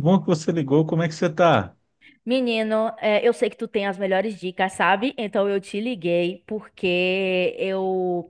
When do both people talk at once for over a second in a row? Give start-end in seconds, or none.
none